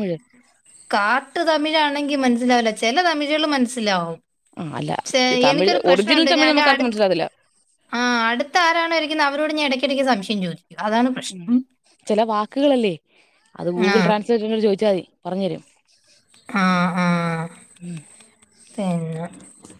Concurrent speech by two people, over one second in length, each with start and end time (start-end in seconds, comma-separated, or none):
5.5-7.0